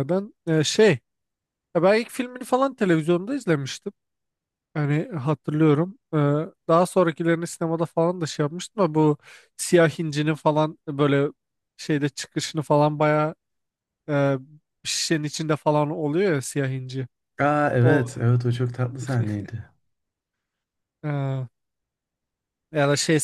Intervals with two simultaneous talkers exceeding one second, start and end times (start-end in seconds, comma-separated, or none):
none